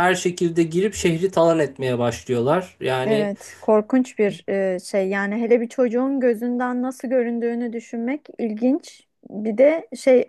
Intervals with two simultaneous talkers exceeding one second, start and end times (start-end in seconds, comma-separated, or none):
none